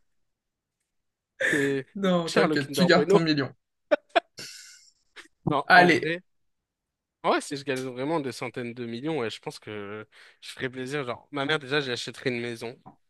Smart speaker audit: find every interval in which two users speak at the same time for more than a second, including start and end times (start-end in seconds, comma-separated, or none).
1.9-3.2